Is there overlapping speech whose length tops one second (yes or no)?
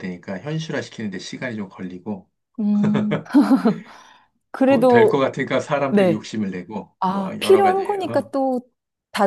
yes